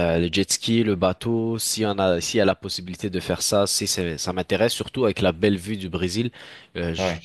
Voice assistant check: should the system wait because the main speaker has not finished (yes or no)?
yes